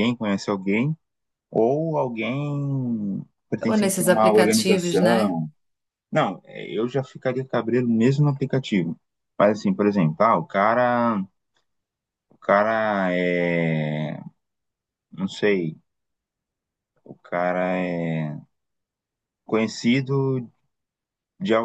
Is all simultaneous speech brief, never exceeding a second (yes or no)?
no